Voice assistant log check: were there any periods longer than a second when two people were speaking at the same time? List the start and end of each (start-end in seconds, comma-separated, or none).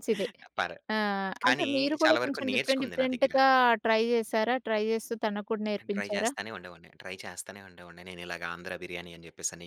1.5-3.3